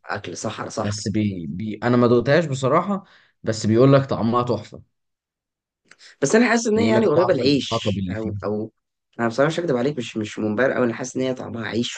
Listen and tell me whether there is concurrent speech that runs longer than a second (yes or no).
yes